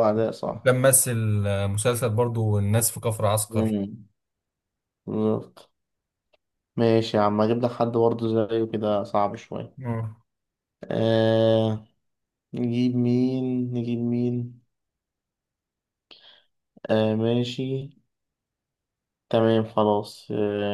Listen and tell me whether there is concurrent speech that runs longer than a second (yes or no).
no